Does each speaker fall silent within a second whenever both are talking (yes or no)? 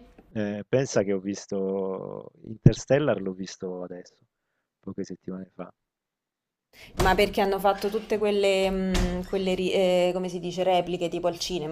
yes